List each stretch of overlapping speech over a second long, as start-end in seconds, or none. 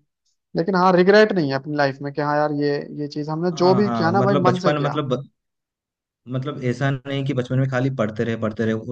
3.5-5.0